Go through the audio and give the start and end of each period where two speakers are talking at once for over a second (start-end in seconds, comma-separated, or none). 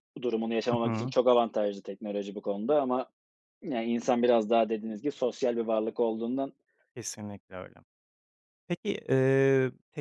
none